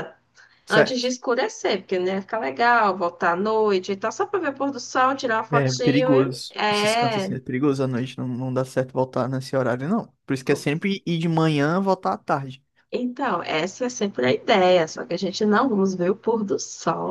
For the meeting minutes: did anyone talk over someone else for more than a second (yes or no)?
yes